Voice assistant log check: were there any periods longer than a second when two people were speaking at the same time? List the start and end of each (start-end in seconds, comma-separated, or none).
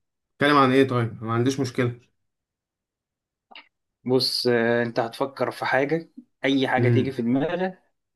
none